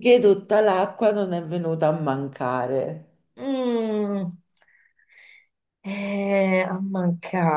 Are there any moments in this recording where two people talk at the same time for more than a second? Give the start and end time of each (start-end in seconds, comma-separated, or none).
none